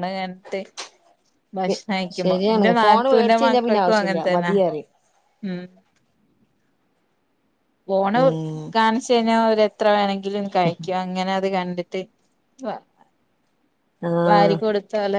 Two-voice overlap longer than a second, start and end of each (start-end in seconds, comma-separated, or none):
2.2-4.5